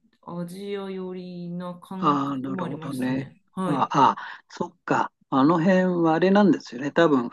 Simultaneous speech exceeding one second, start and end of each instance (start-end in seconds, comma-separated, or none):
2.0-3.9